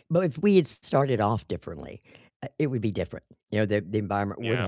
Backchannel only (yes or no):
yes